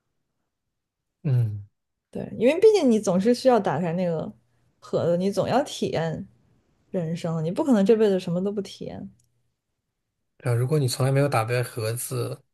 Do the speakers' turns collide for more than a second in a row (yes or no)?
no